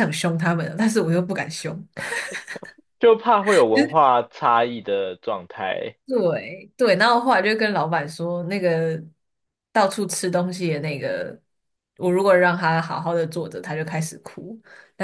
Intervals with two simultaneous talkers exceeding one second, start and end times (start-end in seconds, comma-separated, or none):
none